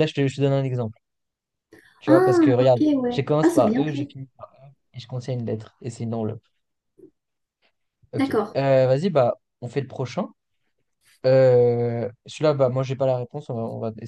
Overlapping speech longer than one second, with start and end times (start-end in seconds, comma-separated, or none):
2.0-4.1